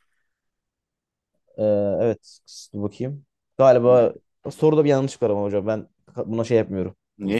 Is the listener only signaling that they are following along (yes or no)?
no